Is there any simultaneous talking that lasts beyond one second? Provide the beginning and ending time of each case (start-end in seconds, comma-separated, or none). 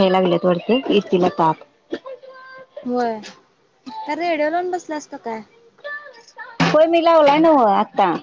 none